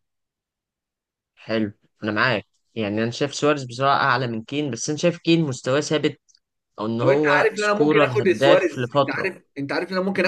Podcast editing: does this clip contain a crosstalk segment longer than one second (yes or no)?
yes